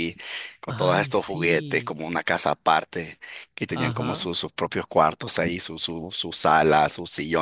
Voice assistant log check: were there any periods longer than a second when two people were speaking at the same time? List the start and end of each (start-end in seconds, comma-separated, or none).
0.7-1.9